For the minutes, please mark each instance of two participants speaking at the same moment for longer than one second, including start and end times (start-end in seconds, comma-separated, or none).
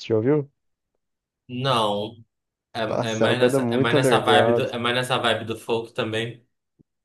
2.9-4.7